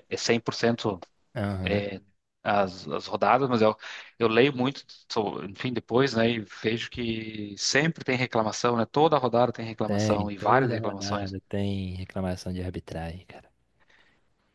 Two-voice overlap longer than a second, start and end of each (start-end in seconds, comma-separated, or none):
9.8-11.3